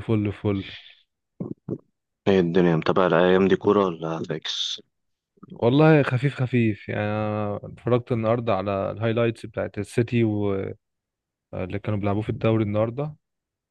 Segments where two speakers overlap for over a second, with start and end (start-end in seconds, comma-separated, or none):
none